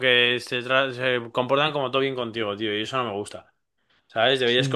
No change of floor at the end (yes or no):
yes